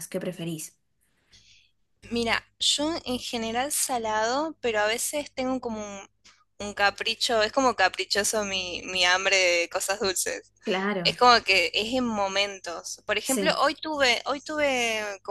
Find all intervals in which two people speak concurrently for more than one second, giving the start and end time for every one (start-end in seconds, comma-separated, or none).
none